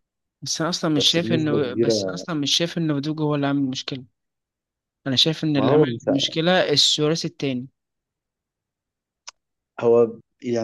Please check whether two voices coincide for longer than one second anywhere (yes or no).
yes